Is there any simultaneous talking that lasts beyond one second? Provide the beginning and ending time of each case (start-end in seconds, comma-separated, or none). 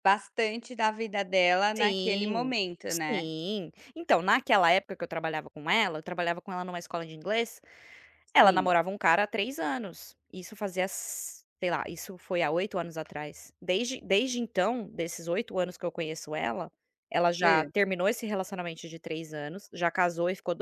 1.8-3.3